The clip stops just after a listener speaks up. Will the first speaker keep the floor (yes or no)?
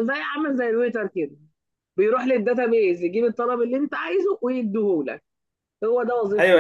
no